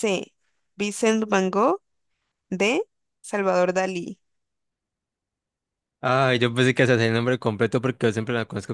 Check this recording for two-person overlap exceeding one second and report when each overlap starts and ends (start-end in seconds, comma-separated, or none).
none